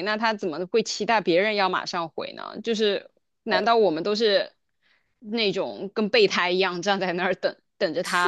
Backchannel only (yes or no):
no